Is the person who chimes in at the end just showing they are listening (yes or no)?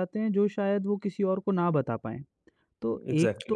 yes